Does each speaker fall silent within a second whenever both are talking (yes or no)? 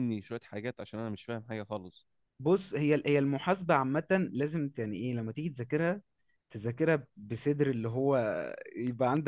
yes